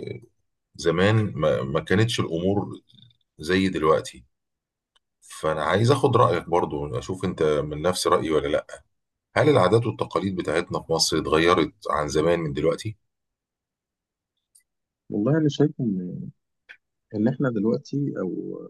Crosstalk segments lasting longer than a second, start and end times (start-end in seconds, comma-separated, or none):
none